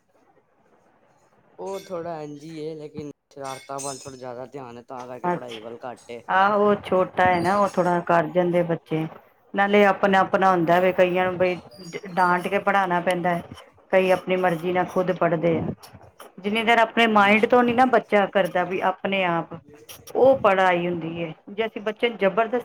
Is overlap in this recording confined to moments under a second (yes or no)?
yes